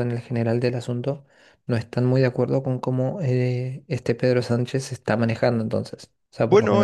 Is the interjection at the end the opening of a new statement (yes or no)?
no